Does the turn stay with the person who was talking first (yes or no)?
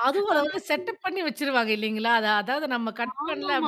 no